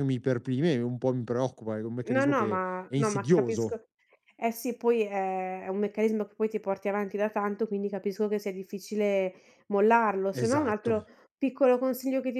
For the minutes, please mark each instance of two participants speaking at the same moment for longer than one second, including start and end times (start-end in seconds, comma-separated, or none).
2.0-3.8